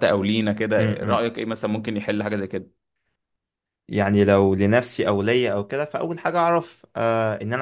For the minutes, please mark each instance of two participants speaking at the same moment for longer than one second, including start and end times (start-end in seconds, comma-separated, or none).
none